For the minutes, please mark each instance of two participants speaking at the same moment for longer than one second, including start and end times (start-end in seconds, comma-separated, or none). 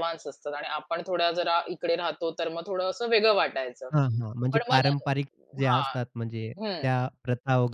none